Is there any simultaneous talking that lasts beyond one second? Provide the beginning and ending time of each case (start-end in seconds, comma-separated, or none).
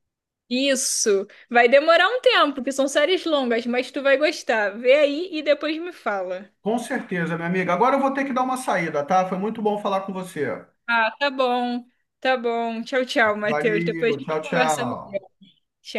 13.4-15.2